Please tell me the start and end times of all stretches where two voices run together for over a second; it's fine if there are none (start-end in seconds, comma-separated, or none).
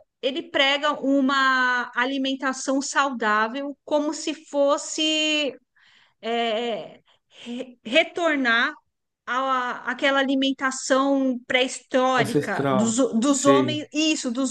12.2-13.8